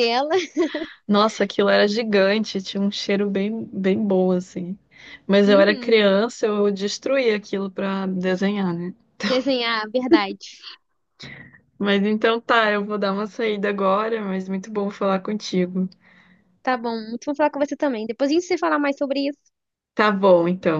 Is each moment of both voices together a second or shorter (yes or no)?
yes